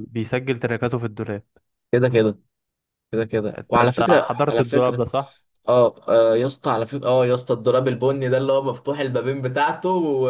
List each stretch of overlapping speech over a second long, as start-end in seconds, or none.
3.6-5.0